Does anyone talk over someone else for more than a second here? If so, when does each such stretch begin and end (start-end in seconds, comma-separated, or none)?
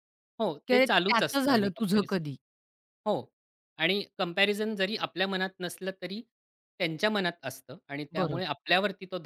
0.7-2.2